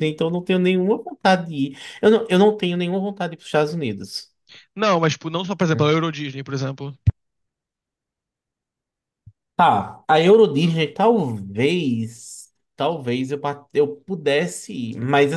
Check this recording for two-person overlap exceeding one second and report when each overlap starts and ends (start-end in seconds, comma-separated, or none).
none